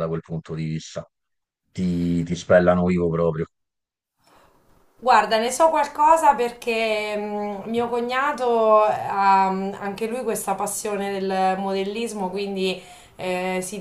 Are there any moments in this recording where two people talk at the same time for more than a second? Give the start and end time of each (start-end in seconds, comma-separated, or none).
none